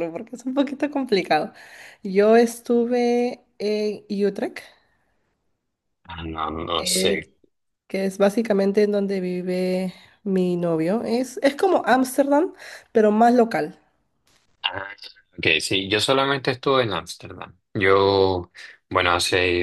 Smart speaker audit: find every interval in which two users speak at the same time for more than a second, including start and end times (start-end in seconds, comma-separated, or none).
none